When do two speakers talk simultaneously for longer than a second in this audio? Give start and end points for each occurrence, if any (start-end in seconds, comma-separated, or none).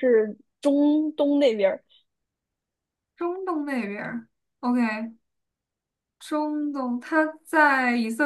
none